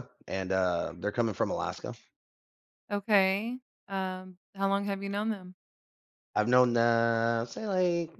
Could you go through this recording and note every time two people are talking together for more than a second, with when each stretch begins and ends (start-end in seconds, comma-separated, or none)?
none